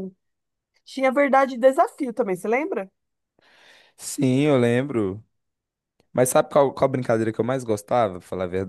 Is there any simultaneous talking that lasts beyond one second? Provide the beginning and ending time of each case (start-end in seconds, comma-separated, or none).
none